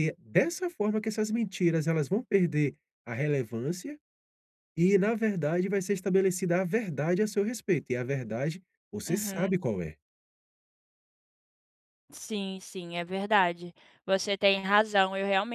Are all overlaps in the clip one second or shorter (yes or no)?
yes